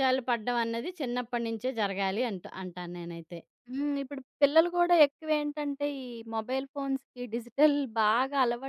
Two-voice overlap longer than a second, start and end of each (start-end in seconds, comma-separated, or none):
none